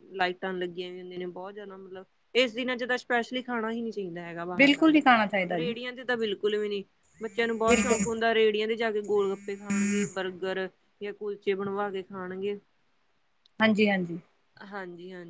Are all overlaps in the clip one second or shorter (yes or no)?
yes